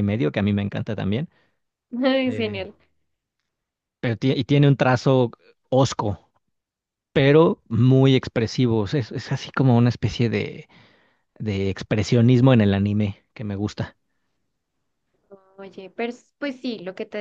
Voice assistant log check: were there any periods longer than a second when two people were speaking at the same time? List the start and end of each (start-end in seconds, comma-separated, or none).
none